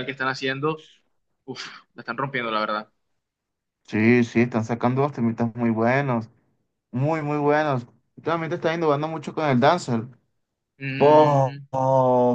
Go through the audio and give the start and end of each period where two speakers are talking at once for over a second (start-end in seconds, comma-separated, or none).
none